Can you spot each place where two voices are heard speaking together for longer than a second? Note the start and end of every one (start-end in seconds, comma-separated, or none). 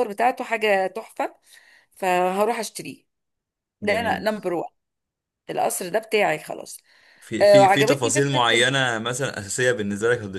7.4-8.7